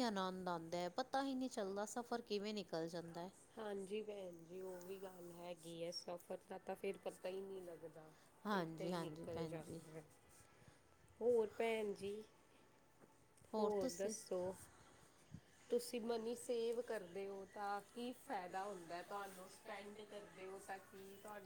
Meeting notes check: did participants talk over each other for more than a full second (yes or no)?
yes